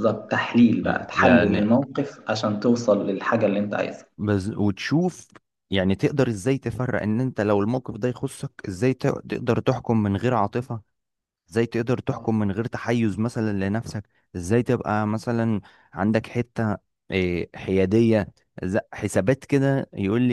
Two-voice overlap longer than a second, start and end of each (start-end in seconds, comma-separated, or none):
none